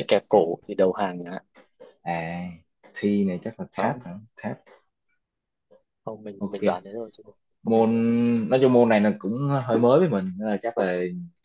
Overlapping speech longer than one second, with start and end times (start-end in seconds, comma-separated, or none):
none